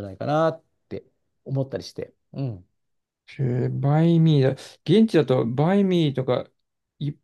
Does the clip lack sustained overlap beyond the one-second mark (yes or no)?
yes